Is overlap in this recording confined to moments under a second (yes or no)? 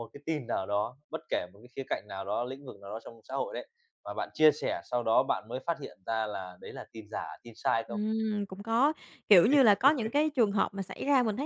yes